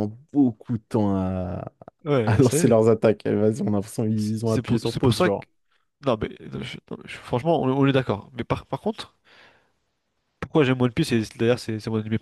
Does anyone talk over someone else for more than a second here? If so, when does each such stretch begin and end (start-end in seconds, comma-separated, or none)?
4.2-5.5